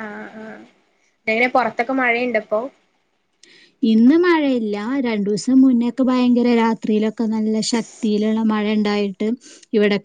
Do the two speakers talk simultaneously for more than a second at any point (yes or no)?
no